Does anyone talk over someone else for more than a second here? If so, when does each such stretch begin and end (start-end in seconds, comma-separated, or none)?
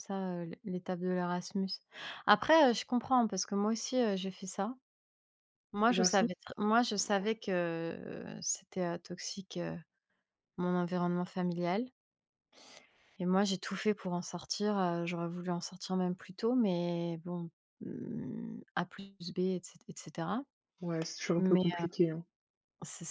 none